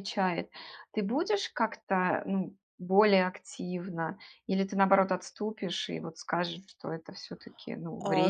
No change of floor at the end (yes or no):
no